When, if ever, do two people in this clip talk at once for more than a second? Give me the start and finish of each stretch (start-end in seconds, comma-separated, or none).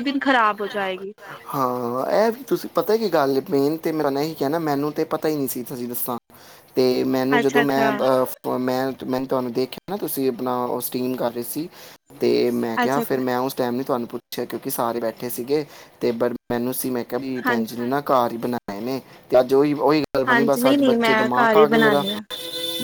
20.3-22.0